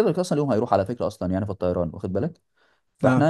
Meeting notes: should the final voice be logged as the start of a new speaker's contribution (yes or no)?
no